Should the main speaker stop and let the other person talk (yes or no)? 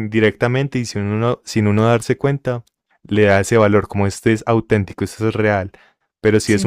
no